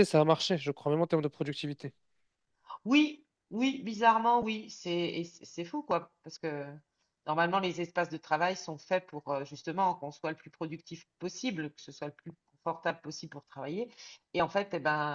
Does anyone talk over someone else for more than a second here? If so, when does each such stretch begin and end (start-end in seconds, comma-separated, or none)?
none